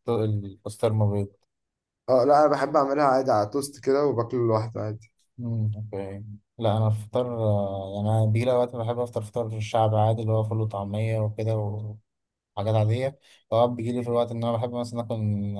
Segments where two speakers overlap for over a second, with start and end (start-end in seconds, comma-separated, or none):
none